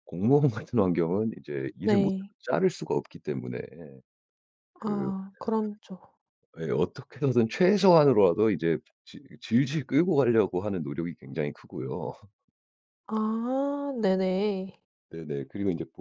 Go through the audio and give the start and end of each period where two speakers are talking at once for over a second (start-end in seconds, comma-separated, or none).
none